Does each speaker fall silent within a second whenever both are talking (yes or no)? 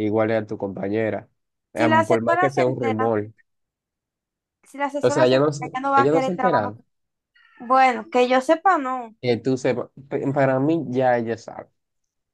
no